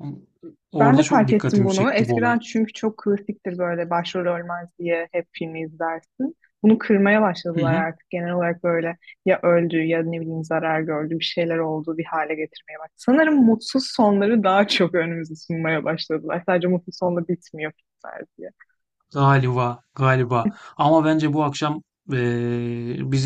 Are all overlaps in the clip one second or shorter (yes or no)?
no